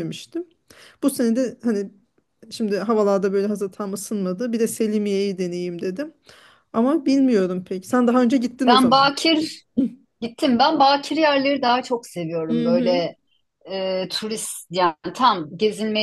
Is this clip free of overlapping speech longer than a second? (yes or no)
yes